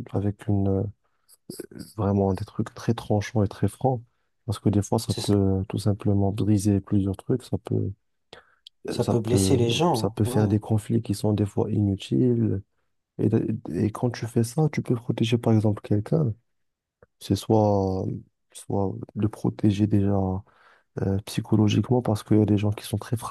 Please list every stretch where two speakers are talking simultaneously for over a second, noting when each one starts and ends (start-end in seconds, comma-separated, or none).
9.1-10.5